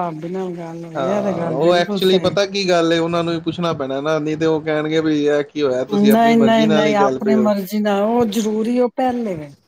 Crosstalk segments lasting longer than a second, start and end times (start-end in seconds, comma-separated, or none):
1.0-2.3, 6.1-7.5